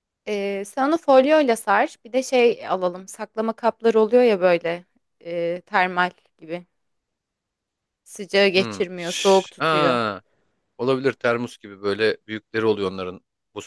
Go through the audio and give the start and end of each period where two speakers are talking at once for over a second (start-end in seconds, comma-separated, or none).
8.5-10.0